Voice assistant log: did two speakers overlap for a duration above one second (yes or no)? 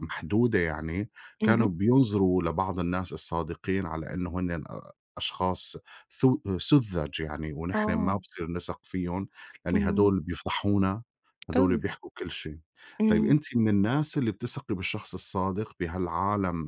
no